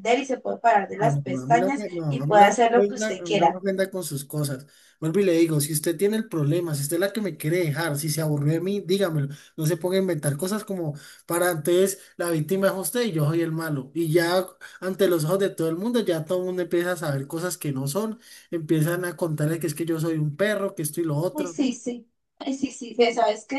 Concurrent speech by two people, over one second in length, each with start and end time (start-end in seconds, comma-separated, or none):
1.0-3.6